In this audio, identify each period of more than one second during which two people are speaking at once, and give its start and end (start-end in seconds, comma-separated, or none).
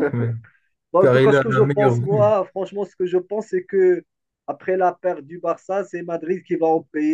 1.0-2.4